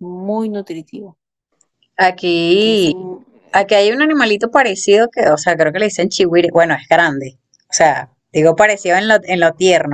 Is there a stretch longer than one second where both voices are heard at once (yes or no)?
no